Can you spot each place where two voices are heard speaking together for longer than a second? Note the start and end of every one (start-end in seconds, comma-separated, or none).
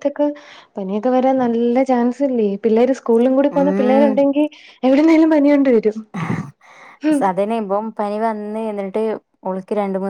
none